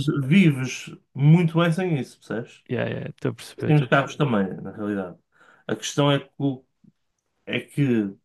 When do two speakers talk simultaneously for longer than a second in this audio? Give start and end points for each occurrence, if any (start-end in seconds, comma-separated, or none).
none